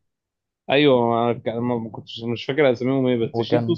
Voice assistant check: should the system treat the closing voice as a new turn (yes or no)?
no